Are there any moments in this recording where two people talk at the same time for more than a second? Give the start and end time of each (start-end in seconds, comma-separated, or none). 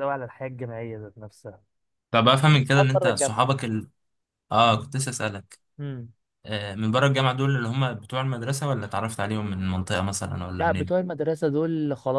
2.3-3.6